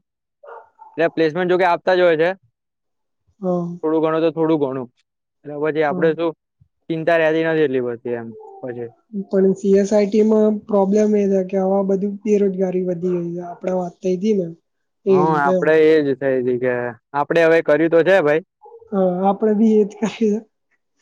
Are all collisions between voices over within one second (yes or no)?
yes